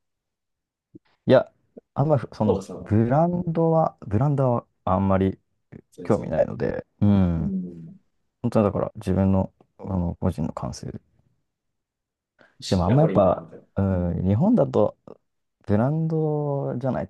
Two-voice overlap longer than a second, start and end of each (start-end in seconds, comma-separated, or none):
12.7-14.2